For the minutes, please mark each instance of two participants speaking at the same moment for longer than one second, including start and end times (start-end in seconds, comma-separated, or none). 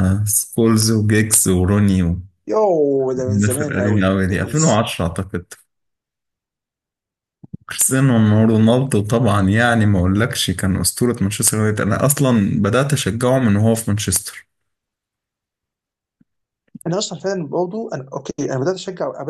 3.3-4.5